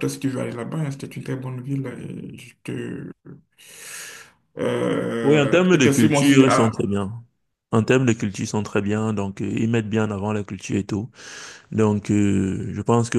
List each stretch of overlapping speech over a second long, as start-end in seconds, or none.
5.2-6.7